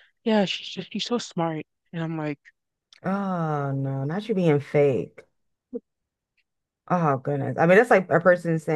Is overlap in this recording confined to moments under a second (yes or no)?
yes